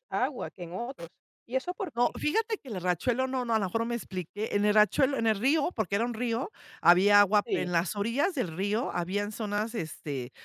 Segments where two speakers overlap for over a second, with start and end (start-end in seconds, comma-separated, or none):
none